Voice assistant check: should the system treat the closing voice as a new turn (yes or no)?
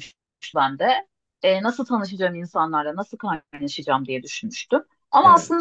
no